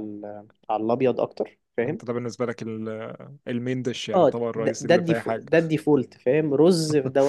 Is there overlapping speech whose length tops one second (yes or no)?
yes